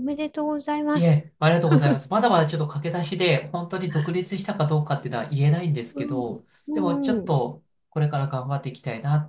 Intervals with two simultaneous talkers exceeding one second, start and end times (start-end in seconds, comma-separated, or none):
6.0-7.3